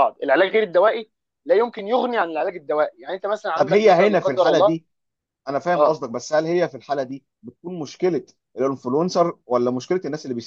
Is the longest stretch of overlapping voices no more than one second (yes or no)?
no